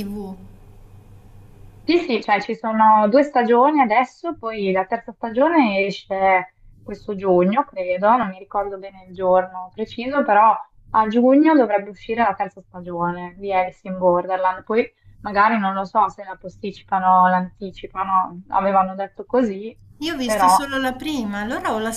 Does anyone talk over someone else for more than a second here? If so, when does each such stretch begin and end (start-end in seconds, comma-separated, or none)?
none